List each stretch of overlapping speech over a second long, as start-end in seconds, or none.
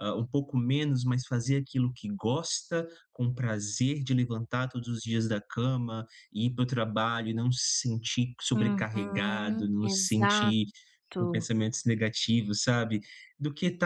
8.5-10.6